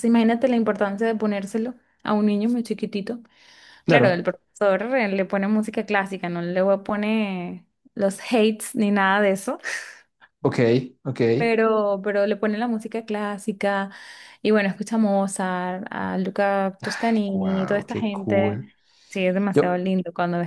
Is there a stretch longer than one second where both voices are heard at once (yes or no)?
yes